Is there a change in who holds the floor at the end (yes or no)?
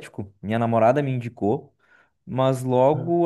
no